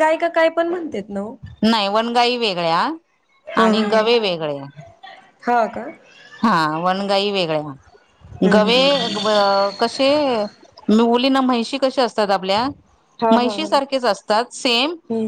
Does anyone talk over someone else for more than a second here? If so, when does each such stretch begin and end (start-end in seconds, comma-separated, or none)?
none